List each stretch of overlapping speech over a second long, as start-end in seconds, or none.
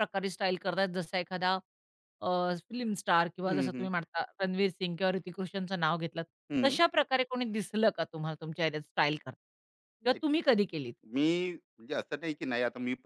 none